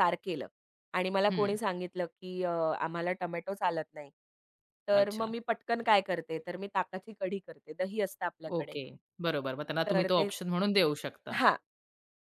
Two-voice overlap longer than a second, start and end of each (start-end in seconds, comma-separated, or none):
none